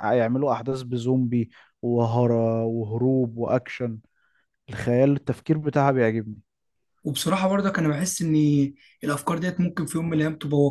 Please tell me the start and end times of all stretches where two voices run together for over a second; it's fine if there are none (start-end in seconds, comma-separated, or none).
none